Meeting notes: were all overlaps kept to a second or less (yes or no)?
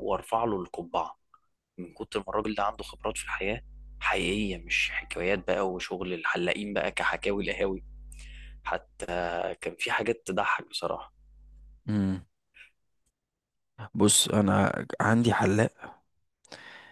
yes